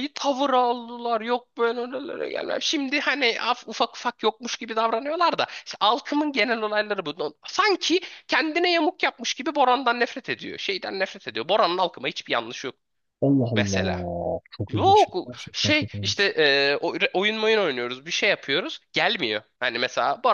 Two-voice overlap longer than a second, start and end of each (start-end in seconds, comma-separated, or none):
14.7-16.3